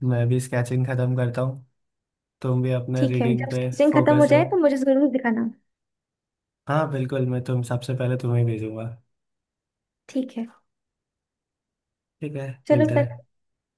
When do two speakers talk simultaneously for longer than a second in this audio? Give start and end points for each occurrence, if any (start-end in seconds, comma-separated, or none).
3.0-4.6